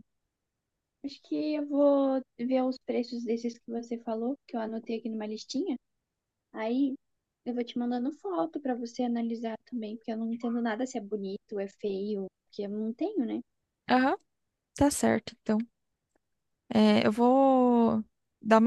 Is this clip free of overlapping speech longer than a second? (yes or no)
yes